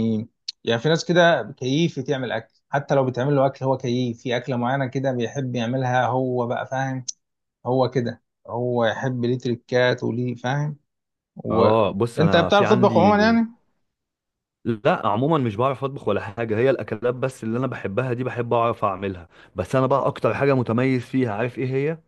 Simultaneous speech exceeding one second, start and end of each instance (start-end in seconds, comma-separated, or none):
11.5-13.1